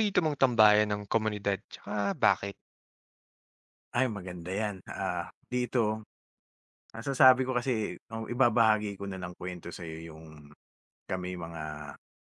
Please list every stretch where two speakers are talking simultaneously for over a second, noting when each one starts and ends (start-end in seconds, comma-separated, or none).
none